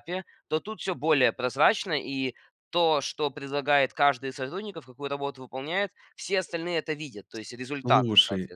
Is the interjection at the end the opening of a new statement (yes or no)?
yes